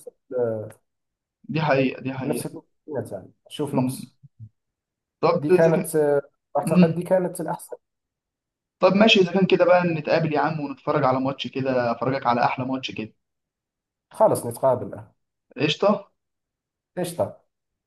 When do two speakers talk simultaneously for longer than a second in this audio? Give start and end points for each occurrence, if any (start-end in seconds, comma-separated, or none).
none